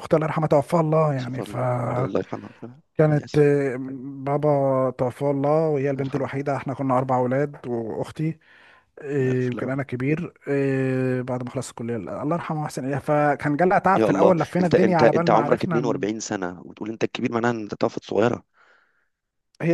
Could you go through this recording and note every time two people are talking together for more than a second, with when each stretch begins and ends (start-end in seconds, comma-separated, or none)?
14.0-15.9